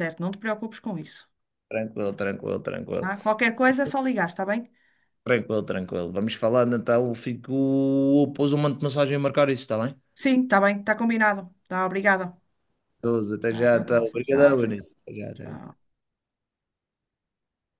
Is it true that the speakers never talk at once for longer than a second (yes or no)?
no